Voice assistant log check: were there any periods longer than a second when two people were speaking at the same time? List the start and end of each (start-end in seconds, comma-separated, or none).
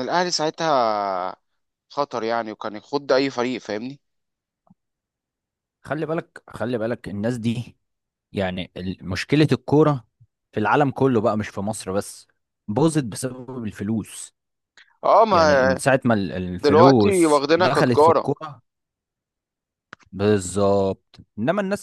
16.6-18.3